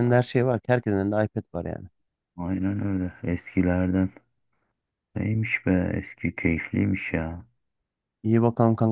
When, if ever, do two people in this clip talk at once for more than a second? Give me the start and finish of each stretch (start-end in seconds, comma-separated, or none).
none